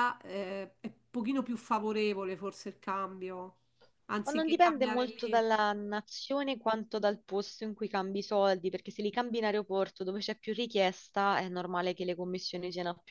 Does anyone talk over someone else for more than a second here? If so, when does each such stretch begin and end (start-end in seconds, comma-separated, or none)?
4.2-5.5